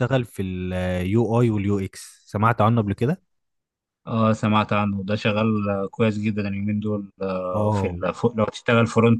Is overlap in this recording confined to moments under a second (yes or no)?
yes